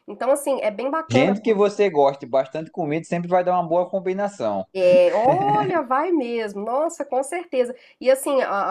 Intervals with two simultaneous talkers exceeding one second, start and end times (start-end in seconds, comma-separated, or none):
none